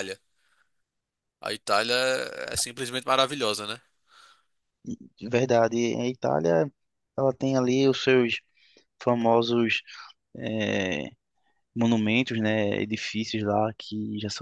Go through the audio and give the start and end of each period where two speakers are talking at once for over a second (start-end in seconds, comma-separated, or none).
none